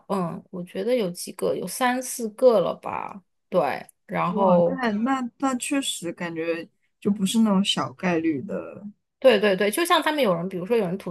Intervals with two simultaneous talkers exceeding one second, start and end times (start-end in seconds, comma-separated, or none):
none